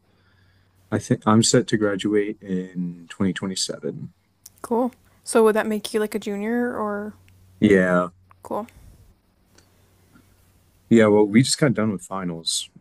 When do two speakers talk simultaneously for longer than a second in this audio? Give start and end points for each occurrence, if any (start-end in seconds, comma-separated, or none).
none